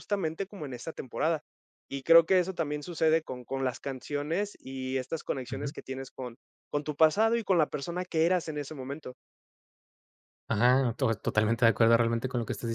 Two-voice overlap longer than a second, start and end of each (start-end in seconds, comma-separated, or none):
none